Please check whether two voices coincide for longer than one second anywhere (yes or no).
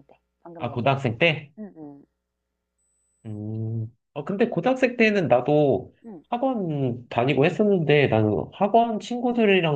no